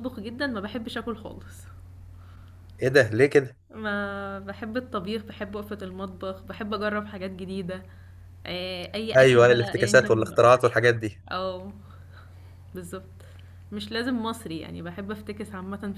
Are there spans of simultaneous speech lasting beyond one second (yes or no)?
yes